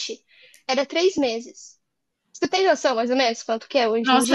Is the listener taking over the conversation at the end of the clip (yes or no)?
yes